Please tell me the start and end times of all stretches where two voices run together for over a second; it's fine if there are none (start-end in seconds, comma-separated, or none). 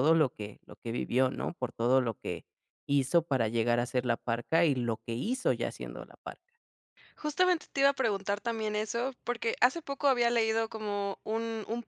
none